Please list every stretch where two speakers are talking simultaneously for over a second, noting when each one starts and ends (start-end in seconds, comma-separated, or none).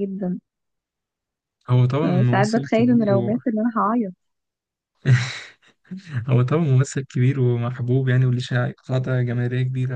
2.0-3.3